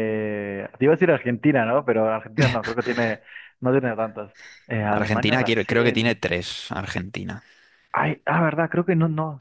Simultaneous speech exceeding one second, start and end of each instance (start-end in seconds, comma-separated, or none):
4.9-6.2